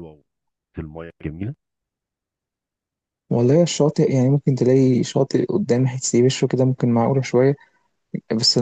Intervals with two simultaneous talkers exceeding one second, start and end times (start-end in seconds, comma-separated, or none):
none